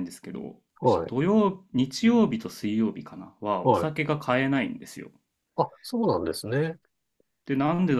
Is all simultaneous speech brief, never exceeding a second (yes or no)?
yes